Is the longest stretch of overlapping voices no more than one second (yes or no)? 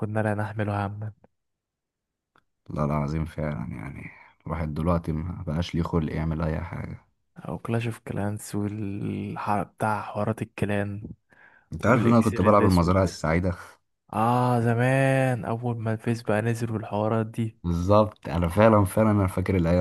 no